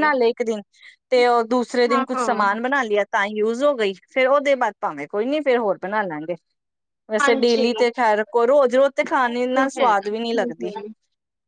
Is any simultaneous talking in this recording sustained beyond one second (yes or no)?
yes